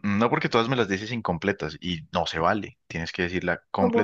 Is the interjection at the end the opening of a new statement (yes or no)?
yes